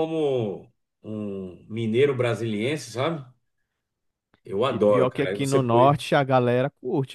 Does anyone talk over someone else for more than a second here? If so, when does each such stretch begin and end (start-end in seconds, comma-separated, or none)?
4.7-6.0